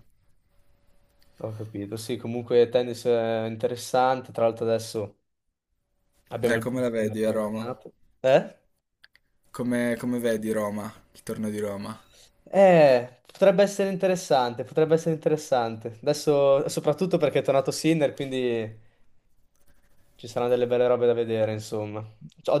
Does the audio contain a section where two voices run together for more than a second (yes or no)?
yes